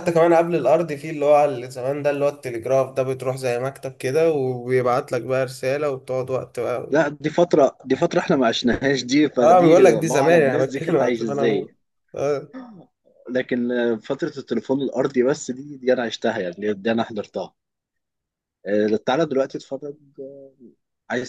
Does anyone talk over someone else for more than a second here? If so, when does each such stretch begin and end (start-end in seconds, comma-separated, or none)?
9.4-11.7